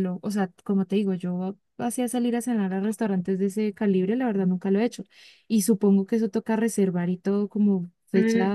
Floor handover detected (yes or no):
yes